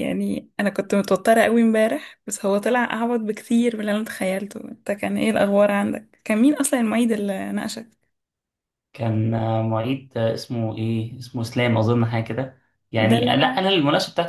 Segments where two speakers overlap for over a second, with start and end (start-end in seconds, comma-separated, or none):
none